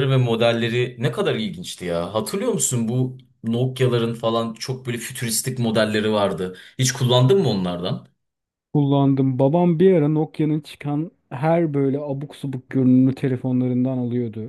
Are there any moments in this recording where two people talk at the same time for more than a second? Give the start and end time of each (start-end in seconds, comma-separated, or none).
none